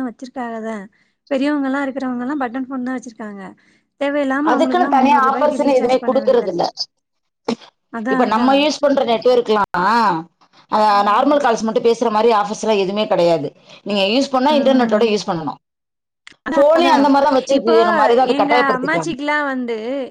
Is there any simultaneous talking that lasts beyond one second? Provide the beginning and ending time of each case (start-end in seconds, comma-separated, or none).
4.5-6.6